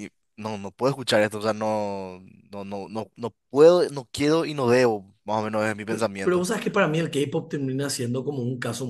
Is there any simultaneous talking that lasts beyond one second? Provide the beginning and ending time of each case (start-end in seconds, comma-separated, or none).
none